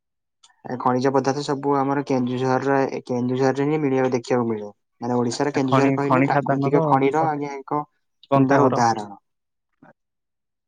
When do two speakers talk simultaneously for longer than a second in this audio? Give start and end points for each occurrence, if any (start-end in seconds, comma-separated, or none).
5.3-6.8